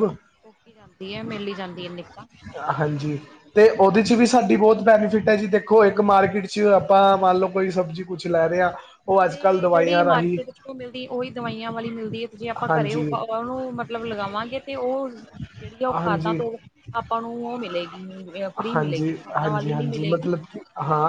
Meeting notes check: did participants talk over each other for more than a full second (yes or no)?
yes